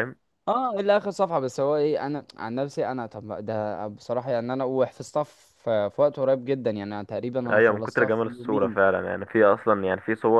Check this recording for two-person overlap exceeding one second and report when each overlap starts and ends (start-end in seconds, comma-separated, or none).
7.5-8.8